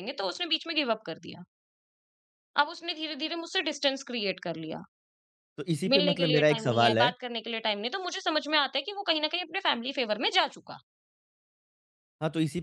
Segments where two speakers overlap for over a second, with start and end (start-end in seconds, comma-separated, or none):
5.9-7.1